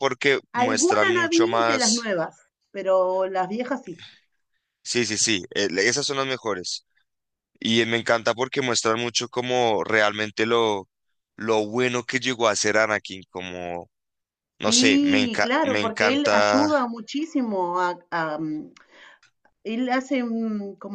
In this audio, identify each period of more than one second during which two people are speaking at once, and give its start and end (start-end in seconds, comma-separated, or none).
0.5-2.1, 14.7-16.7